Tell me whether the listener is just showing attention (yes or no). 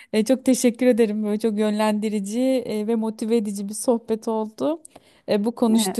yes